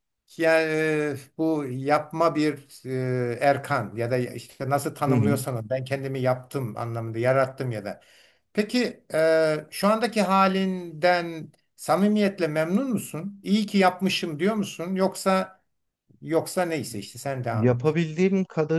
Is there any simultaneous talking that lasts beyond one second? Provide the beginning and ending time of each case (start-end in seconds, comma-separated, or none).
none